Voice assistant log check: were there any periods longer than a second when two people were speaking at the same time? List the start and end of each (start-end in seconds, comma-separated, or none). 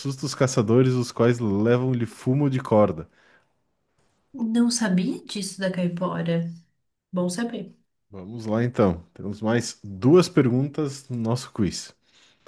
none